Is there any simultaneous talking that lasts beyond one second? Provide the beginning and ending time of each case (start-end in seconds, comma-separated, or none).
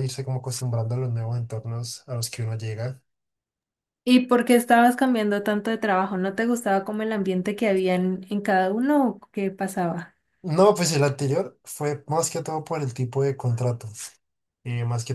none